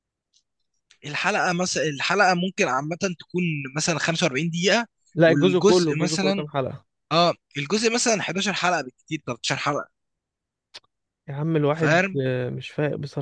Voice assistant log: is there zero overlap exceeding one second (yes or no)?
no